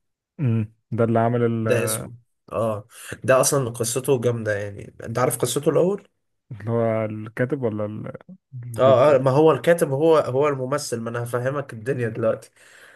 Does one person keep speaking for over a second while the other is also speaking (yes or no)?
no